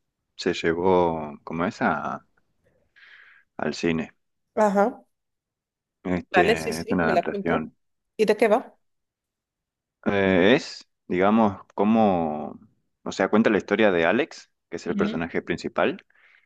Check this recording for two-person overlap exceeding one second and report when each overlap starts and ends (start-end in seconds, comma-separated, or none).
6.3-7.7